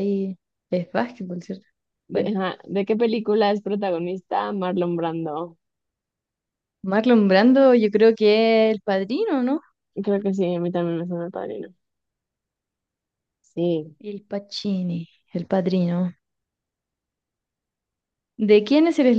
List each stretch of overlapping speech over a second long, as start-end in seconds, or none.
none